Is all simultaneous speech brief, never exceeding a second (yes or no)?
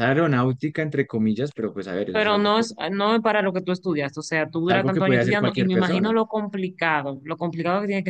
no